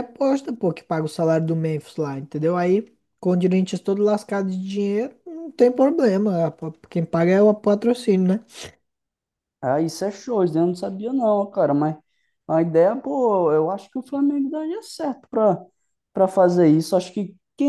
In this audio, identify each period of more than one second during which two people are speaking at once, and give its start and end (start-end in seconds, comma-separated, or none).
none